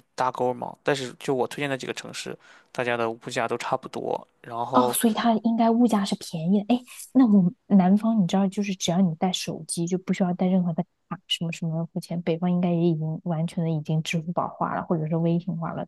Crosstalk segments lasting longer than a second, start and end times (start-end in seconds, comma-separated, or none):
none